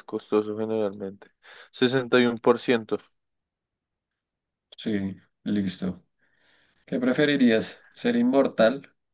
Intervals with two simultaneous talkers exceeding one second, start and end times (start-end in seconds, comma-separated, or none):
none